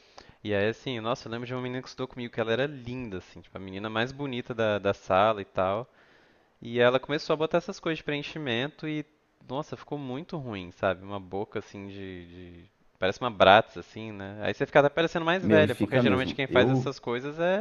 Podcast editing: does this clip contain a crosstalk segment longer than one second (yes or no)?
yes